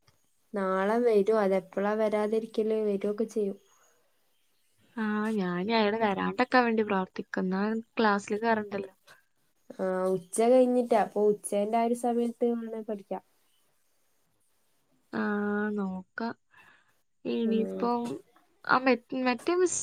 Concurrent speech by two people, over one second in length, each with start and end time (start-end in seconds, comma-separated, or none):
none